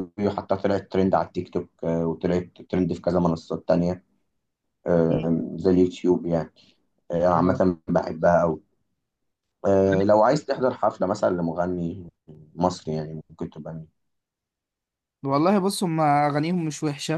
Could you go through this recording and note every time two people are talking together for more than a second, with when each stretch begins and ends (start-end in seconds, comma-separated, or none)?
none